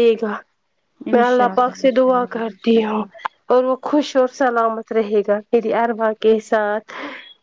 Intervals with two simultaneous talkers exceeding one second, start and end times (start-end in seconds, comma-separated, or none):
1.1-3.0